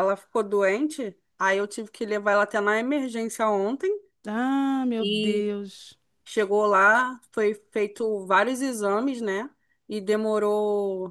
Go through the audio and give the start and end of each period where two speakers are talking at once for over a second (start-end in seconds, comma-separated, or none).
none